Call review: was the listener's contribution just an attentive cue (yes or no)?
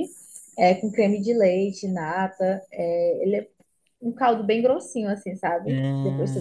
yes